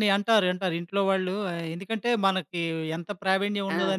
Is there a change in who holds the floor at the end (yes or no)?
no